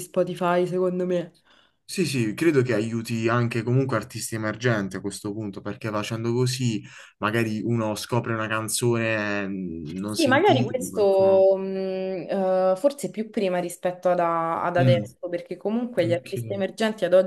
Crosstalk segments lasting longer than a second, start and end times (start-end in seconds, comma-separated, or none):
10.0-11.4